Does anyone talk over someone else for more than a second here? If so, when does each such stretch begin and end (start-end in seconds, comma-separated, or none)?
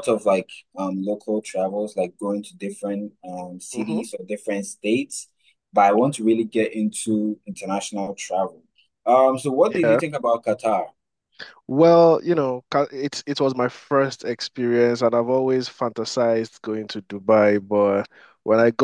none